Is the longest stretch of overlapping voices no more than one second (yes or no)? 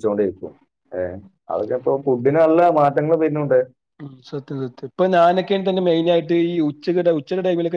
yes